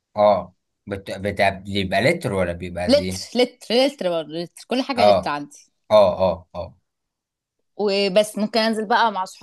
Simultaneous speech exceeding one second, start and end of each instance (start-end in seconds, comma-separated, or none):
none